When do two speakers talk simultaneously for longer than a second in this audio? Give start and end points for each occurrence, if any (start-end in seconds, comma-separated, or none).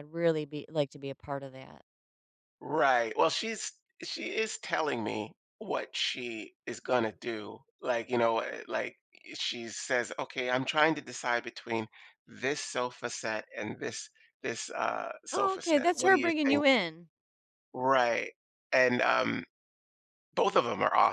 15.3-16.6